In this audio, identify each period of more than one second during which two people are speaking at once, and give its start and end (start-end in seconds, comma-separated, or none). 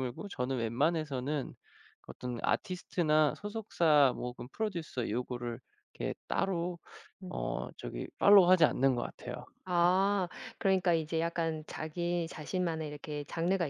none